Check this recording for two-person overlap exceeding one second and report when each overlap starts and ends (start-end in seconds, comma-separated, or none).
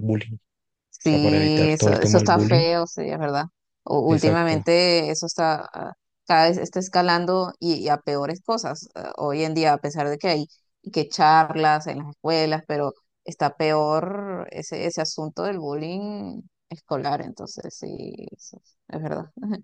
0.9-2.6